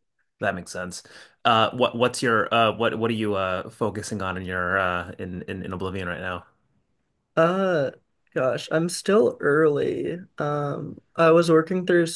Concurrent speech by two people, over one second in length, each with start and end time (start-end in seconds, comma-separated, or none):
none